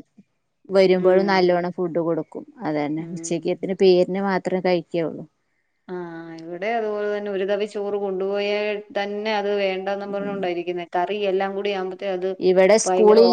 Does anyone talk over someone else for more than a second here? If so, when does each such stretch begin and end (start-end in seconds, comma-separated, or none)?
none